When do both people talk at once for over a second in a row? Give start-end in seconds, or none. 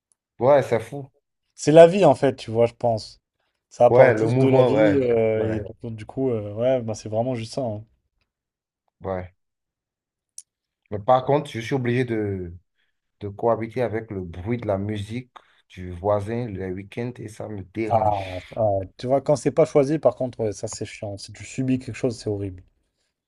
3.9-5.7